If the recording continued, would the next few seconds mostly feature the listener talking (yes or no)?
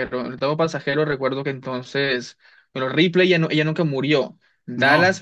no